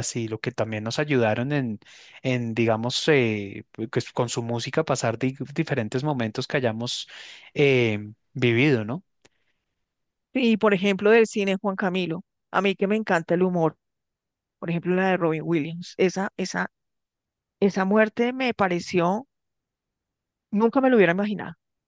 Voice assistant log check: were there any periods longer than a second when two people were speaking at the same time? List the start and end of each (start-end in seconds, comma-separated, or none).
none